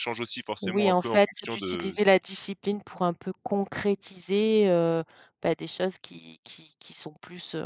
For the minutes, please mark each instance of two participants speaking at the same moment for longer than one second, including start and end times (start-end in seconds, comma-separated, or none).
0.6-2.0